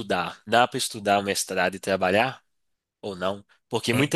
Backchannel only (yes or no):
yes